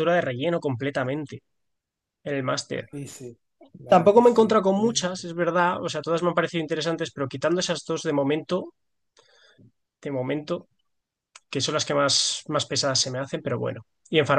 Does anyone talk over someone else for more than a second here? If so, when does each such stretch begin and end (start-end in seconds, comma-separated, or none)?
3.9-5.2